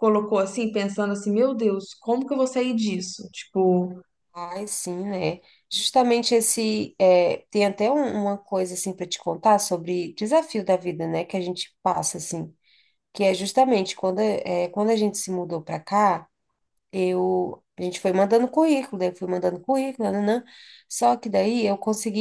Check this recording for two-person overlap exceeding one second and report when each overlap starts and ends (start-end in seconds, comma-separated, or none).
none